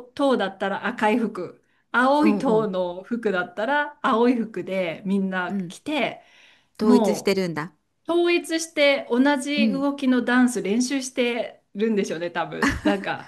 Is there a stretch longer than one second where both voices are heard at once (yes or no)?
no